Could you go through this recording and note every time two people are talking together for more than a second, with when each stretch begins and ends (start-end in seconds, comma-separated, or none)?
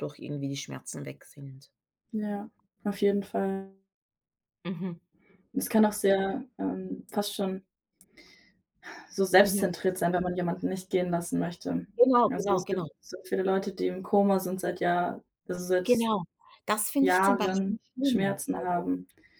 17.0-18.4